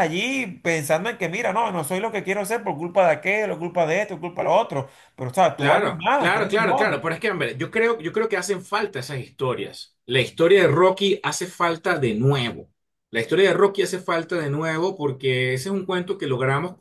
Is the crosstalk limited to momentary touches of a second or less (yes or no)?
no